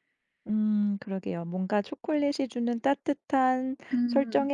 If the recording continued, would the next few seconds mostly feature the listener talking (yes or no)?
no